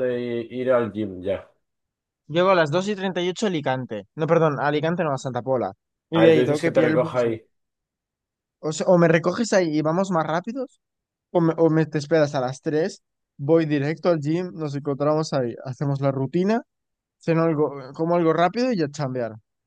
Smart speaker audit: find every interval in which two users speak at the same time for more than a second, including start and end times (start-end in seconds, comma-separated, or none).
6.1-7.4